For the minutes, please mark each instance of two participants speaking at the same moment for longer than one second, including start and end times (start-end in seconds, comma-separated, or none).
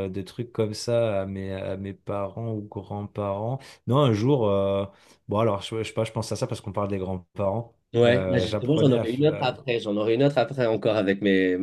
7.9-9.2